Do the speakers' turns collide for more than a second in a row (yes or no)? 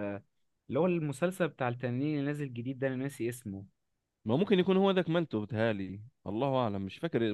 no